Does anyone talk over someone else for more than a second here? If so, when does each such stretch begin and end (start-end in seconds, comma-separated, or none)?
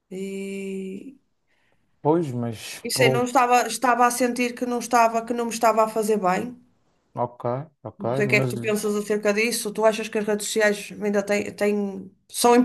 none